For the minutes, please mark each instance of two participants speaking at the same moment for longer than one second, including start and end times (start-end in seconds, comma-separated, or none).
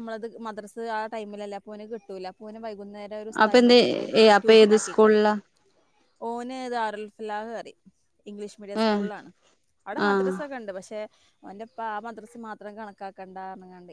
none